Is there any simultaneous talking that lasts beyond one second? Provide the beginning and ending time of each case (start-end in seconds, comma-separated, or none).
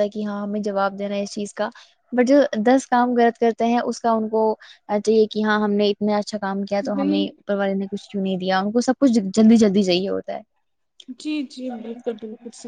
none